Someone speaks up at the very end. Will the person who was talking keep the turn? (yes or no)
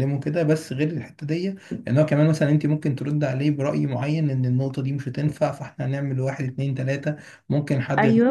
yes